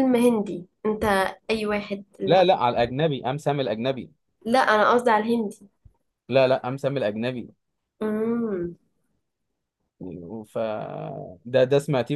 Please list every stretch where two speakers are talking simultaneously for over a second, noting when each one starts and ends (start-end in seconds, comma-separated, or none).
none